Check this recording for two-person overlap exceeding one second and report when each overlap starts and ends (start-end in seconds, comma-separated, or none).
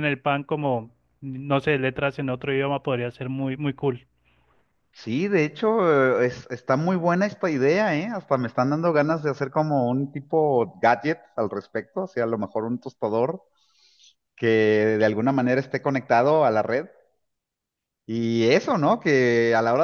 none